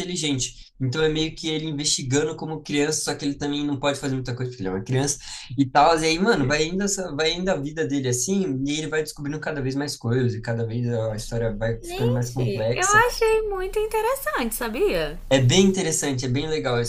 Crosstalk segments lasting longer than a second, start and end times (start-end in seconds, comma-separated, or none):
11.8-13.0